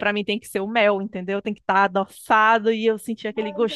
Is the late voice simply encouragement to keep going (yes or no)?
no